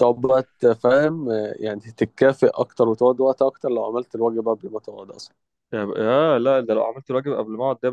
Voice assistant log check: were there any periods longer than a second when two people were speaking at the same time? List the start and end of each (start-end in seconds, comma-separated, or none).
none